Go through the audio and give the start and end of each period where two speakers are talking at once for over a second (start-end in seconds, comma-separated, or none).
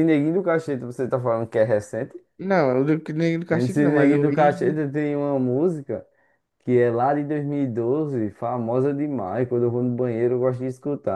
3.5-4.8